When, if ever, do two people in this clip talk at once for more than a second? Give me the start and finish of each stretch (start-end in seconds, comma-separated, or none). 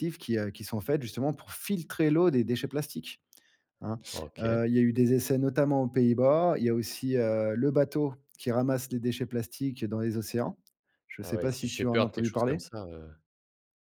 11.2-12.6